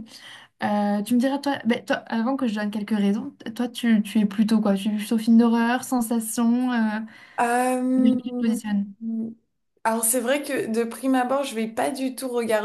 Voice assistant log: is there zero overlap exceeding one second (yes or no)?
yes